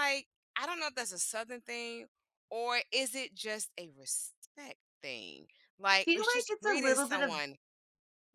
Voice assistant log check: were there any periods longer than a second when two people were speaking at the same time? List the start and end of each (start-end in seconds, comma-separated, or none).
5.9-7.4